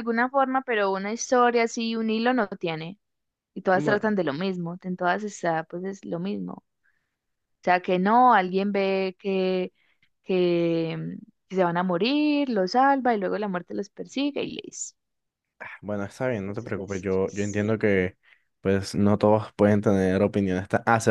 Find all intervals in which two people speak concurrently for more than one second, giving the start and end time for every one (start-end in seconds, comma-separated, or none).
16.5-17.7